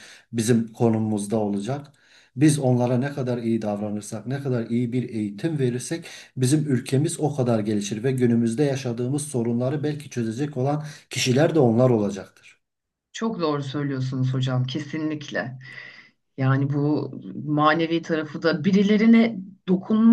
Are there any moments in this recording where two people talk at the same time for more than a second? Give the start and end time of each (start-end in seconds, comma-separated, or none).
none